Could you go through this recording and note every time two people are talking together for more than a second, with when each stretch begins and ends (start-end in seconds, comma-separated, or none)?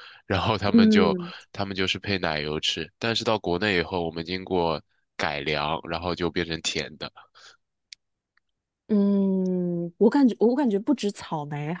none